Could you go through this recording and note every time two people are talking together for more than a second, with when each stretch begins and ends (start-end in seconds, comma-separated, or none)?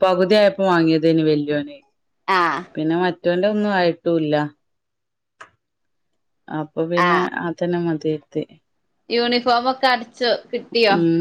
none